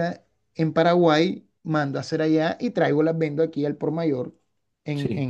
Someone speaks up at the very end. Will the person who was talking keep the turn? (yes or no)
yes